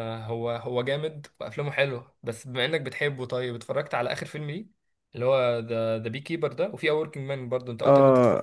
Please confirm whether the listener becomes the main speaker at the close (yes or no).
yes